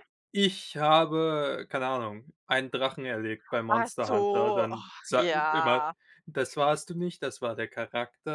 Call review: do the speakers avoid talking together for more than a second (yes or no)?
no